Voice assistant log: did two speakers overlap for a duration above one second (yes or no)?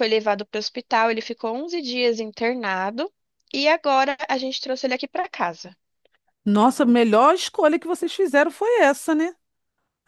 no